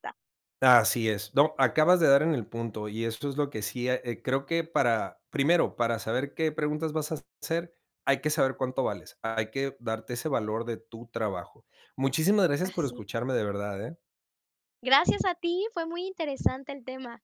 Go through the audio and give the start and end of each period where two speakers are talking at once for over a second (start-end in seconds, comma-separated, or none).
none